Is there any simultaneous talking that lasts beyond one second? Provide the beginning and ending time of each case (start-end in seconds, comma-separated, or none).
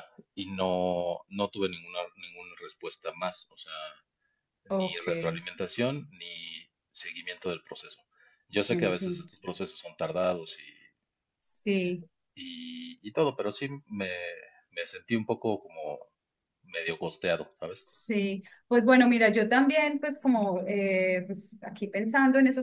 none